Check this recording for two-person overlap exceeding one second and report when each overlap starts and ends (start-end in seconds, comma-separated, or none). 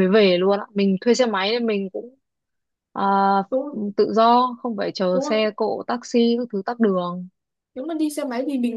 none